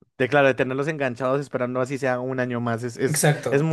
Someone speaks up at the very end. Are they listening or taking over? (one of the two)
listening